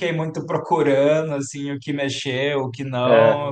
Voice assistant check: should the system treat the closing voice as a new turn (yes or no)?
no